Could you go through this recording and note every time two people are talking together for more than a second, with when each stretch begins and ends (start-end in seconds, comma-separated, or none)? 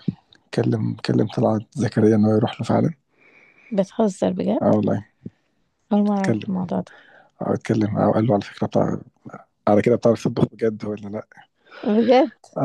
none